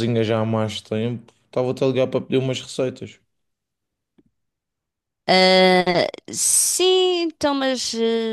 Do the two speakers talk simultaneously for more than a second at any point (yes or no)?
no